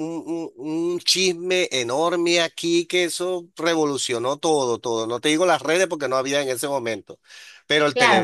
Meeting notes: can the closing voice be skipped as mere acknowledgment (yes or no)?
no